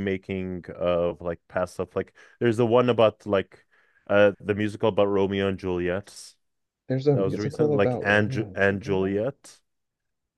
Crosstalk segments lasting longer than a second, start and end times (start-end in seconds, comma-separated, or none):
7.1-9.2